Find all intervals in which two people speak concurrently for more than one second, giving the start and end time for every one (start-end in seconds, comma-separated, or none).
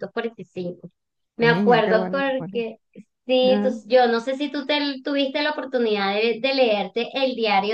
1.4-2.6